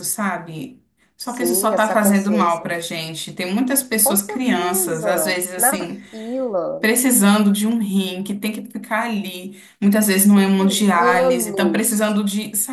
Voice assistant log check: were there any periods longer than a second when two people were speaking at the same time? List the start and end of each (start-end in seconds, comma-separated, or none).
1.2-2.7, 4.0-6.0, 10.1-12.2